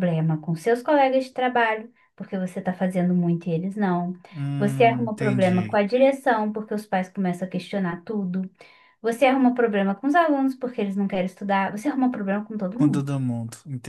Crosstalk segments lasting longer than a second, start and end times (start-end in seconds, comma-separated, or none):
4.6-5.8